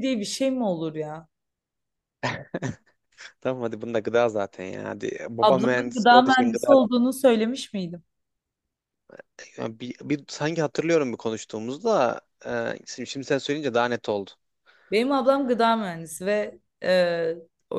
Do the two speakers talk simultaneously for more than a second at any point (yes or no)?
yes